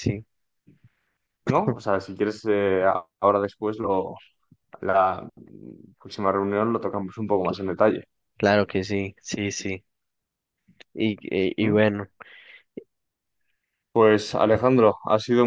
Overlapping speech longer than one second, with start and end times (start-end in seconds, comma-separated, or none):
none